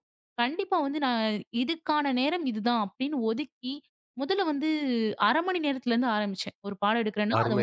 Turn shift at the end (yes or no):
yes